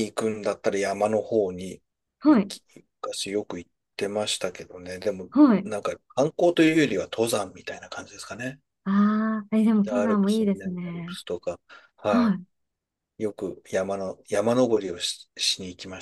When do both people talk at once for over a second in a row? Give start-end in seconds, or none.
9.8-11.2